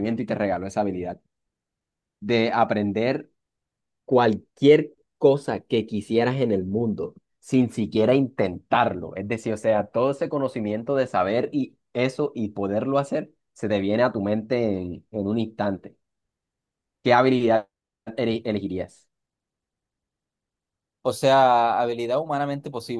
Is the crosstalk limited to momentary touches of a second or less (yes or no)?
yes